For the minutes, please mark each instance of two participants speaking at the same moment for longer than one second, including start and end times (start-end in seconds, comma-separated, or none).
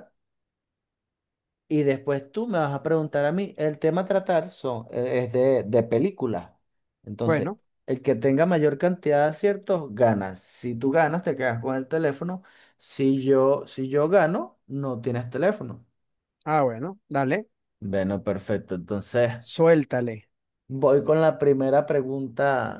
none